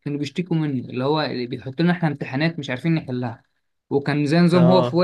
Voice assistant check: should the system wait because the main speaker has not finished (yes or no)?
yes